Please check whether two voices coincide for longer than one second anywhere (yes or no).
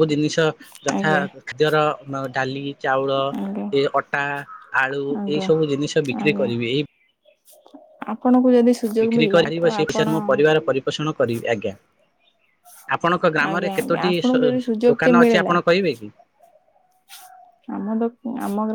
yes